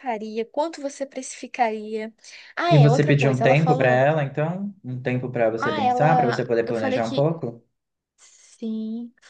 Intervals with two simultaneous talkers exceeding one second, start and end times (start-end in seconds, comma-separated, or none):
2.7-4.0, 5.5-7.3